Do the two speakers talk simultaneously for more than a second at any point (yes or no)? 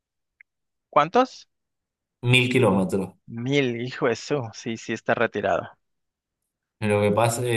no